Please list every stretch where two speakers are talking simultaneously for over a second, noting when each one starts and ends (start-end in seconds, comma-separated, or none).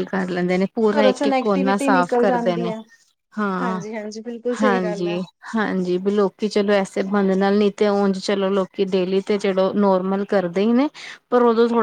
1.0-2.7